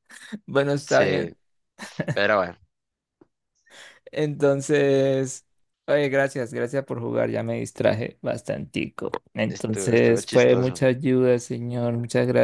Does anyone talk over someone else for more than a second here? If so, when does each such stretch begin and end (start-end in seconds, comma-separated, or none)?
9.5-10.8